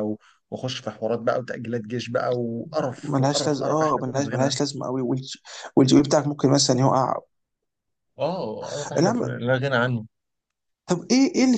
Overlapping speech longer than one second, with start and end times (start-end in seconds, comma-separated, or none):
3.0-4.6